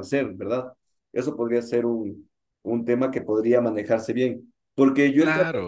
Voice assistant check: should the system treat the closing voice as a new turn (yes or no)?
no